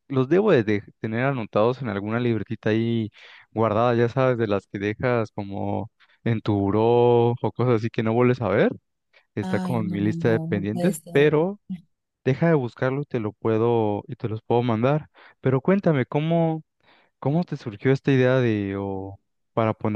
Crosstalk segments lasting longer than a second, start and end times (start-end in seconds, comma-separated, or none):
9.4-11.3